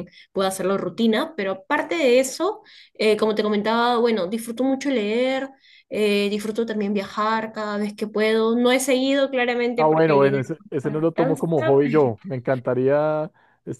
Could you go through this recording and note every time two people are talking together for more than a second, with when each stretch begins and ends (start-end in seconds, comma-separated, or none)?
9.8-11.4